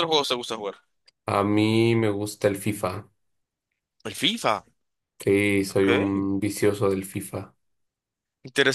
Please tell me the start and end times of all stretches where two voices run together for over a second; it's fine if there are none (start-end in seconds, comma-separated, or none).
none